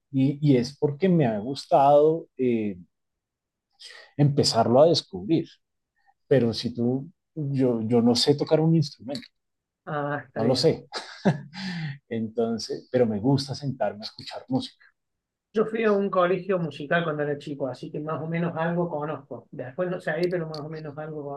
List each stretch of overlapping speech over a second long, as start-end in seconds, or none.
none